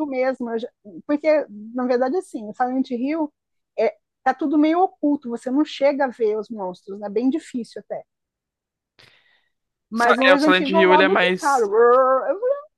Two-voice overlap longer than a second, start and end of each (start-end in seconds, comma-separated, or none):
10.0-11.6